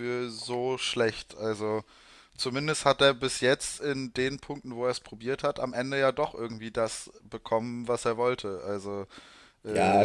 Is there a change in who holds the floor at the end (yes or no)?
yes